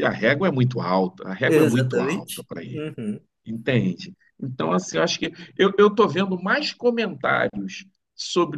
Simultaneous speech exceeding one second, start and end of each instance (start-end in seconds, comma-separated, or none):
1.5-2.9